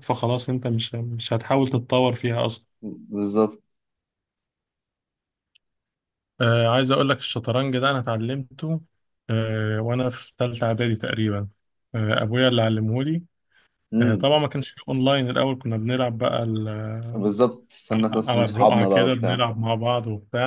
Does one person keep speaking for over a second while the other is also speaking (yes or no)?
yes